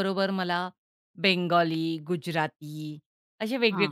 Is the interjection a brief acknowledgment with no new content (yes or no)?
yes